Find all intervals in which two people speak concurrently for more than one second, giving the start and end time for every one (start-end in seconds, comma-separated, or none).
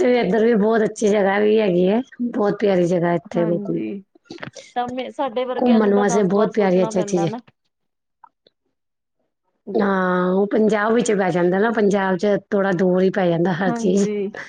5.6-7.3